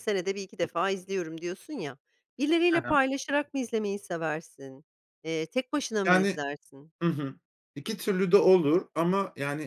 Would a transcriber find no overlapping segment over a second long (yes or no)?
yes